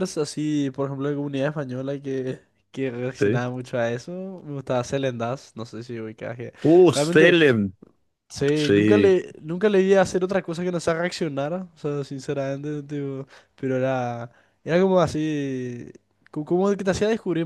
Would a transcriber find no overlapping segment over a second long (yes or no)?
yes